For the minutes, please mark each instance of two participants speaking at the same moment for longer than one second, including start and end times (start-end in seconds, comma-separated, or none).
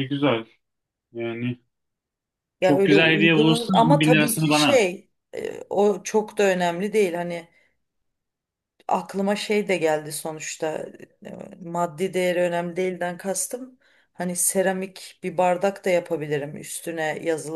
2.6-4.8